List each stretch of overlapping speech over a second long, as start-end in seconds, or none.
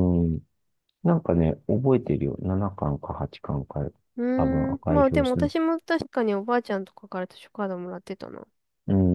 4.4-5.6